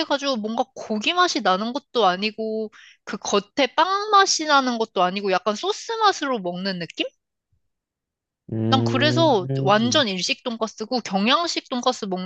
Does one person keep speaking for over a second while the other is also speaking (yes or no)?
yes